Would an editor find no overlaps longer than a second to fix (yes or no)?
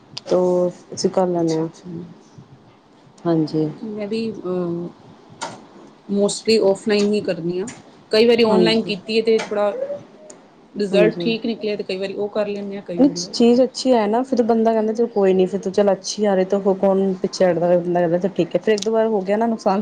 yes